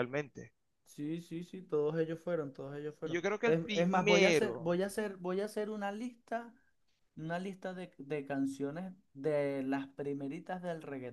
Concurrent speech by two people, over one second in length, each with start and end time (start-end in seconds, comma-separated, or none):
3.0-4.8